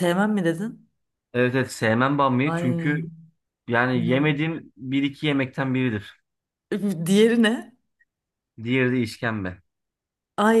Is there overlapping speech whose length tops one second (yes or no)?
no